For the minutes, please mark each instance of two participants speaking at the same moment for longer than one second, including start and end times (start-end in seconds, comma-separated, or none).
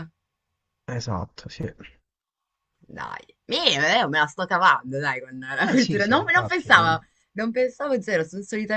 5.7-7.0